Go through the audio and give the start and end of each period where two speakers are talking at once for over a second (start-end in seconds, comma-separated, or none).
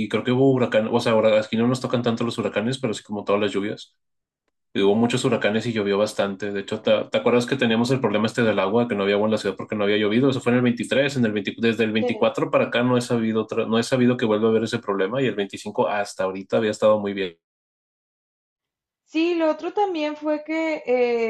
none